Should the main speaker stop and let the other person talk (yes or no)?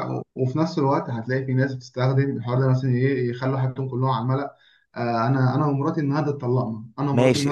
yes